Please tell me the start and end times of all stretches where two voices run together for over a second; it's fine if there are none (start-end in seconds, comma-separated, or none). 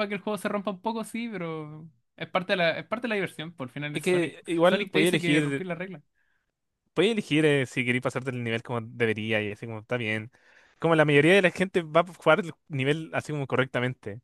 3.9-5.6